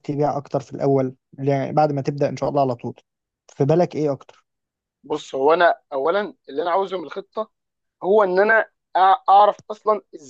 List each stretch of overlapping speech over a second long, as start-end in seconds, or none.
none